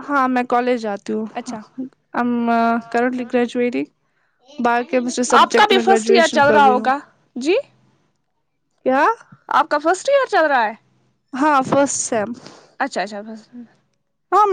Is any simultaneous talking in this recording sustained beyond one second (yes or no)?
yes